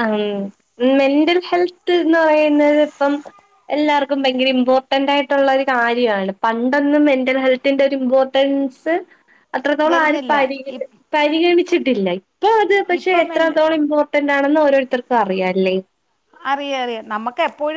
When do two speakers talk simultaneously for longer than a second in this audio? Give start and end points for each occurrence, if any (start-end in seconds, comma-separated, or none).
none